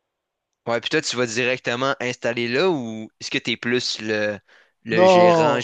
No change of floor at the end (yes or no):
no